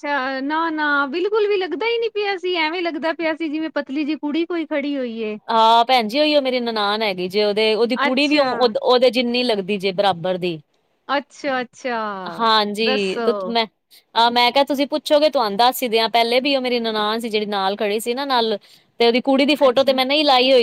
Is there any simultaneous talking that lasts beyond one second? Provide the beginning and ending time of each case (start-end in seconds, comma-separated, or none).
none